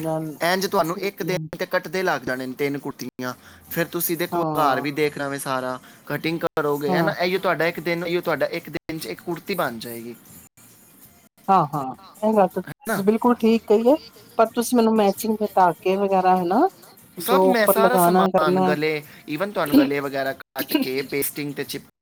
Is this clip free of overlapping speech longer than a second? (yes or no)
no